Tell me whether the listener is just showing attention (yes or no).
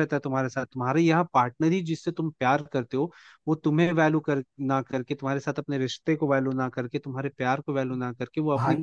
yes